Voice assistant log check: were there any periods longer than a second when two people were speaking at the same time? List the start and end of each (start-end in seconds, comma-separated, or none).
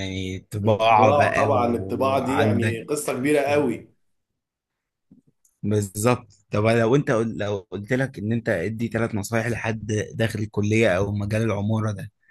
0.6-2.8